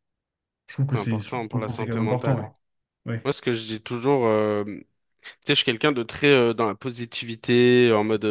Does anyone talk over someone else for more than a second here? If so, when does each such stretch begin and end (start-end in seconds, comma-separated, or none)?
0.9-2.5